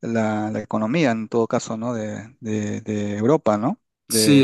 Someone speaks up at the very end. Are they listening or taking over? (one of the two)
taking over